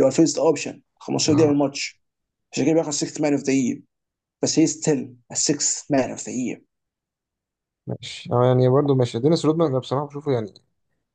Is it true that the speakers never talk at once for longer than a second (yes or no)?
yes